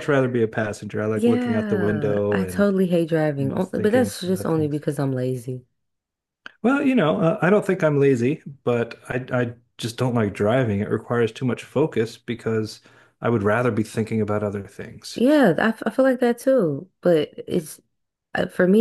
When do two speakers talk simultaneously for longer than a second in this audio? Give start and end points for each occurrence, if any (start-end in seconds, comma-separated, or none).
1.1-2.7, 3.4-4.8